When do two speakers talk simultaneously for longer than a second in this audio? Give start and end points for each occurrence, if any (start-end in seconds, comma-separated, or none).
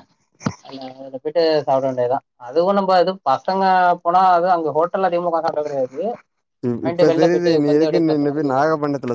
6.8-8.6